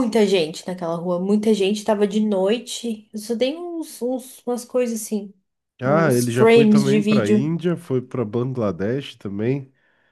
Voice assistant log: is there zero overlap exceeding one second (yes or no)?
no